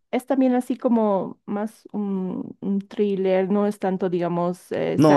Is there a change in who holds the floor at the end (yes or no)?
yes